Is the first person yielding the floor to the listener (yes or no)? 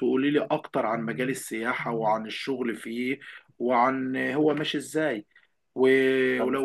no